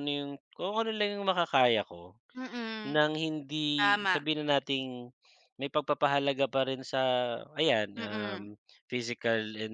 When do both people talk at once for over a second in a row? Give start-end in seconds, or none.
none